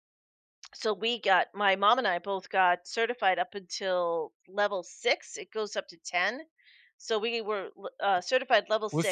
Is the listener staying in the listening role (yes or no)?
no